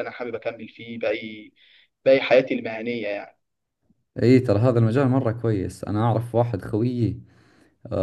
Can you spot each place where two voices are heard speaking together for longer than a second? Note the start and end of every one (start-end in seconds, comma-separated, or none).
none